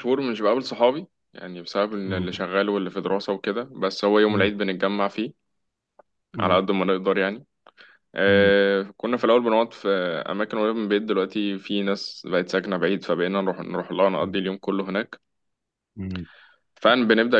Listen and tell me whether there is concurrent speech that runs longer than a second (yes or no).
no